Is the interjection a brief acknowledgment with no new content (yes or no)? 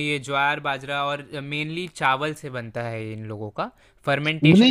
no